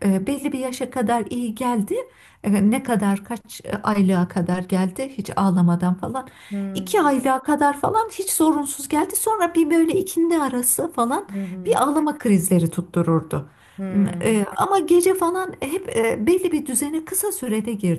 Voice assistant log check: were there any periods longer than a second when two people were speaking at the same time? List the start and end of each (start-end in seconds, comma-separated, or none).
none